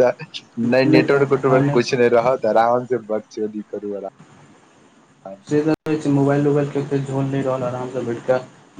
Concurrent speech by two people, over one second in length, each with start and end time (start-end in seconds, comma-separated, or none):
none